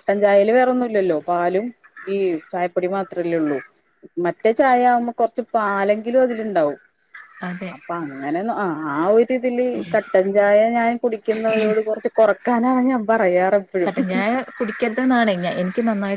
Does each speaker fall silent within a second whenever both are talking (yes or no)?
yes